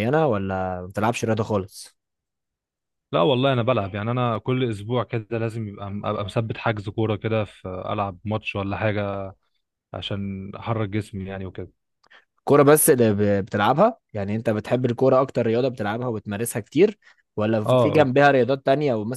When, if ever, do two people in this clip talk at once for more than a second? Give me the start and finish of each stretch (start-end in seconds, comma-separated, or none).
none